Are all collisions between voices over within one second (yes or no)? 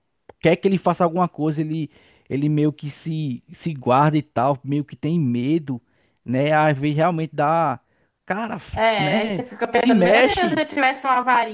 no